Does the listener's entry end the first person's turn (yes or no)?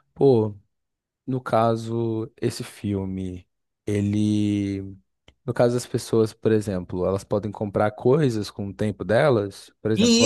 yes